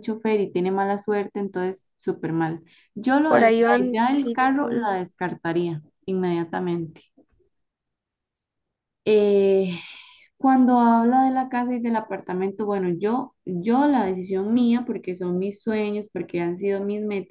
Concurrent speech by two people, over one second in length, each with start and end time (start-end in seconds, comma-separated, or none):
3.2-5.0